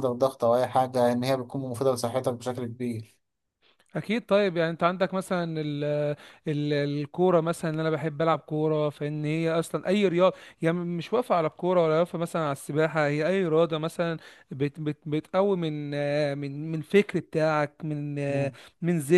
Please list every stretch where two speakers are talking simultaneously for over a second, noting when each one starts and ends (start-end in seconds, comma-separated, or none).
none